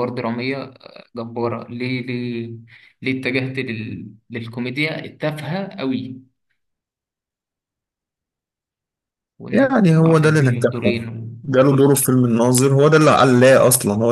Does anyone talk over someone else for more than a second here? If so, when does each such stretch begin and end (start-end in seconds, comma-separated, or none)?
9.5-11.0